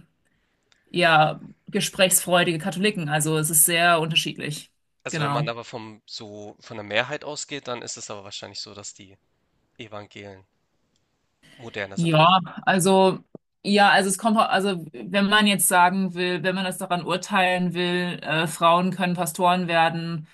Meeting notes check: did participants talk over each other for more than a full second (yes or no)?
no